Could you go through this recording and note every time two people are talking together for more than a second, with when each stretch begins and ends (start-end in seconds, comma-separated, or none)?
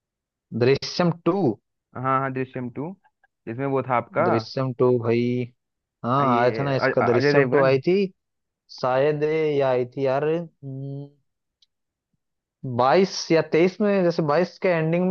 6.2-7.8